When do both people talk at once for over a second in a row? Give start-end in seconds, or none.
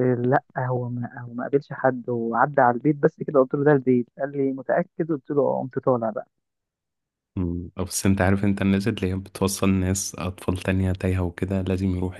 none